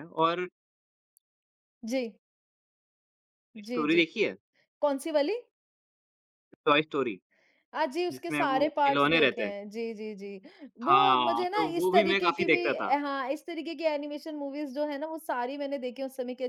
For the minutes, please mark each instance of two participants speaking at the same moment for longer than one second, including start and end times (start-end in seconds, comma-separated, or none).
8.1-9.5, 10.9-12.9